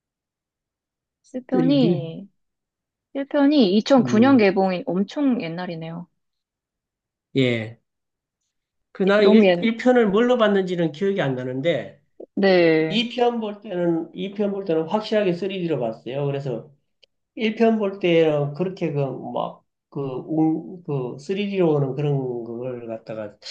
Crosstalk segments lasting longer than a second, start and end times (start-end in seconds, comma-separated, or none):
none